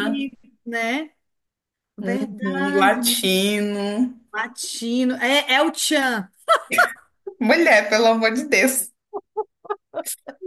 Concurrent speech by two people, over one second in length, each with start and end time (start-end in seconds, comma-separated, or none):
2.0-3.4